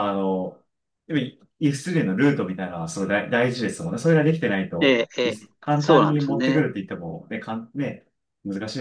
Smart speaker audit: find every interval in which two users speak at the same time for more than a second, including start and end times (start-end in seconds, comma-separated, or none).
4.8-6.7